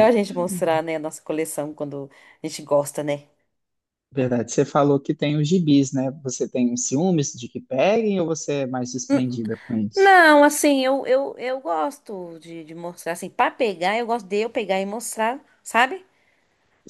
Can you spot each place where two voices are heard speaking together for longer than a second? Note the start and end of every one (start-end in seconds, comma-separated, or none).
none